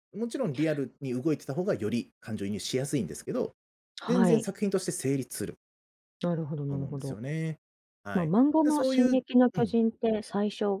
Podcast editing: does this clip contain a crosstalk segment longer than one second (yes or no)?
yes